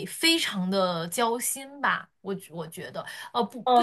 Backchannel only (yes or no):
yes